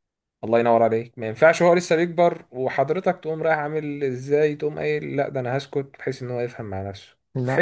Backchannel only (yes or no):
yes